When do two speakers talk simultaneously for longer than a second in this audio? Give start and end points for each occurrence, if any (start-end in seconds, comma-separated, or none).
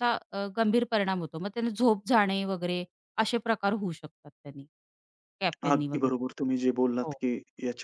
none